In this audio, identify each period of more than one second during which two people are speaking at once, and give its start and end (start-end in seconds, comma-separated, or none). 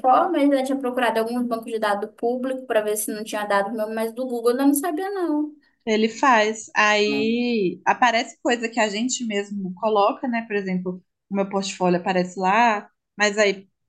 none